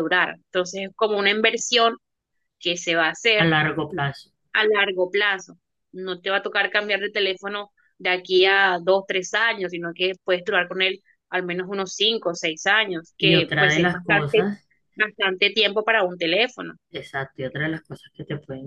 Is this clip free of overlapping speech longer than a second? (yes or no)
no